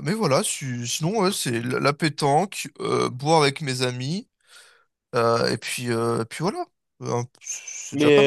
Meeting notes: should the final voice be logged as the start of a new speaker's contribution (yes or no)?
yes